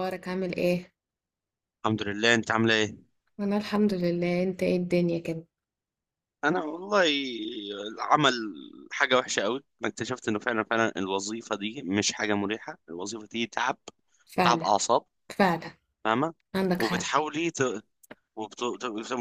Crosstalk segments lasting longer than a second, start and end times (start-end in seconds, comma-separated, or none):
none